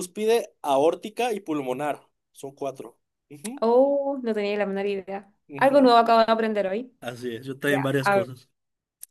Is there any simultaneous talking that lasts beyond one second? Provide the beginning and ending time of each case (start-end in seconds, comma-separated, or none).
none